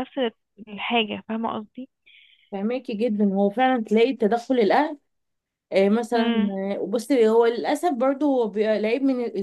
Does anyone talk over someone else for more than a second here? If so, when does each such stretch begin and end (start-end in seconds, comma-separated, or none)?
none